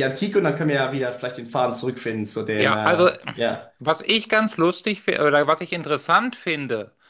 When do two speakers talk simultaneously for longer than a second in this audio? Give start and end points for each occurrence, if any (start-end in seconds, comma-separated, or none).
none